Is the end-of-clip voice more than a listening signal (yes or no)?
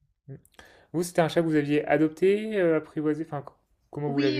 yes